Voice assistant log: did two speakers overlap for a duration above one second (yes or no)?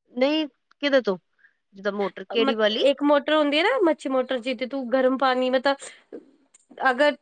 no